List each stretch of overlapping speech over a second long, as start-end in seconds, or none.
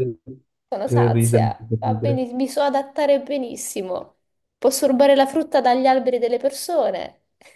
0.8-2.2